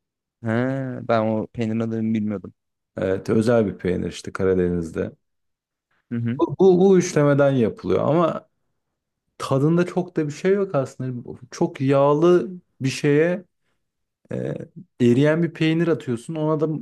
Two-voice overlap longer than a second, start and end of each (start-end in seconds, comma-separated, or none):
none